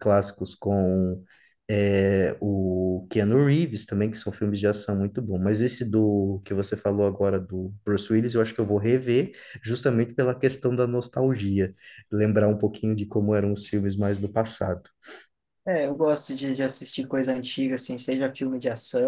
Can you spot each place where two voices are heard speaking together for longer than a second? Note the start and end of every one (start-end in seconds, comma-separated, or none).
none